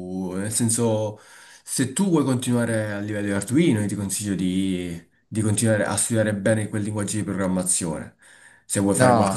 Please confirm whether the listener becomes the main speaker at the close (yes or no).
yes